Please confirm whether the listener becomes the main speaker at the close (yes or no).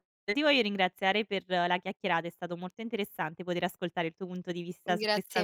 yes